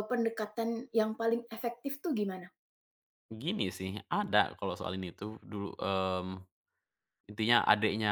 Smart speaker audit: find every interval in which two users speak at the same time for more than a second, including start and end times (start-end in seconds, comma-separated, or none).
none